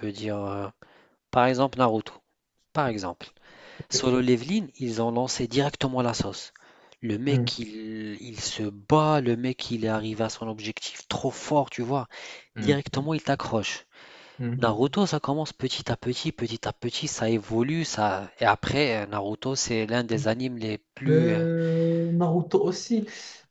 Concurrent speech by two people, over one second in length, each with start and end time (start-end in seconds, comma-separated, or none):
none